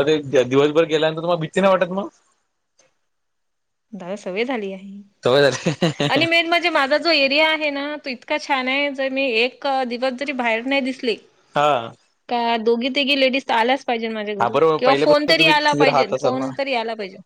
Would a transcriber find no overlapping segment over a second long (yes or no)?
no